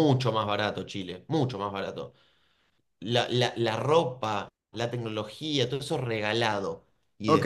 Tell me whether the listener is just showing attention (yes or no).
no